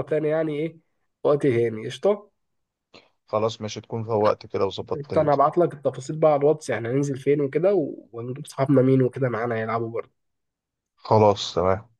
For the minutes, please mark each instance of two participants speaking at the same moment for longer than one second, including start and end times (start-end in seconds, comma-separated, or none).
none